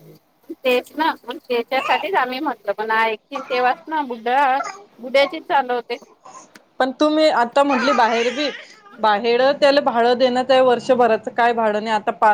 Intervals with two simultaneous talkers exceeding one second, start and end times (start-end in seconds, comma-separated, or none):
none